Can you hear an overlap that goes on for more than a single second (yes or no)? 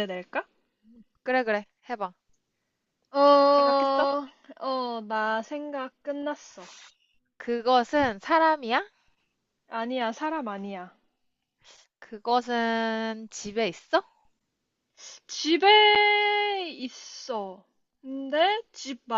no